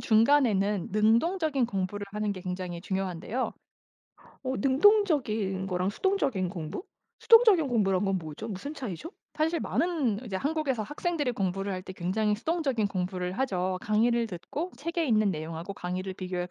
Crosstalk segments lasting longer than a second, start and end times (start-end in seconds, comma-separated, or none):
none